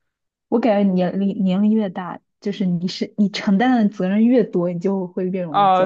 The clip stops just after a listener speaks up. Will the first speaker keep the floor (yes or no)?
no